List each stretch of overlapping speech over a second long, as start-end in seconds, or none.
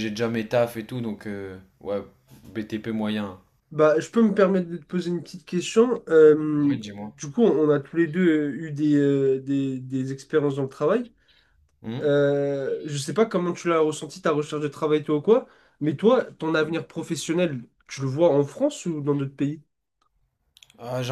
none